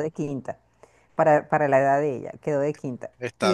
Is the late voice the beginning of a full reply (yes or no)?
no